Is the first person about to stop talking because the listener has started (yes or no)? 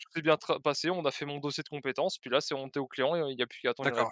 yes